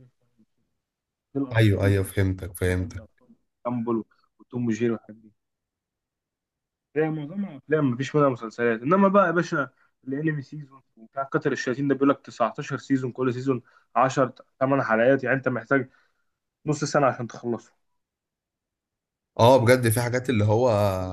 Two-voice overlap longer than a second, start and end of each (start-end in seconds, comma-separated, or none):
1.6-3.0